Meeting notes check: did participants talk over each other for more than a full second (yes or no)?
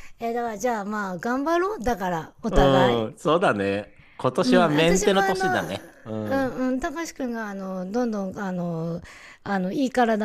yes